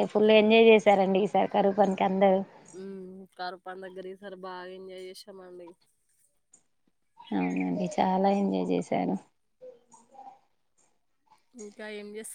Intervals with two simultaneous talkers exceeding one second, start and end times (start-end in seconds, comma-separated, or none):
none